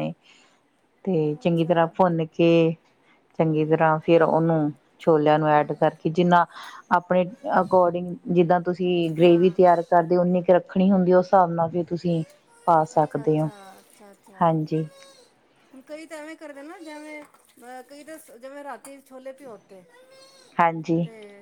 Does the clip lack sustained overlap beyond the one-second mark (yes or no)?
yes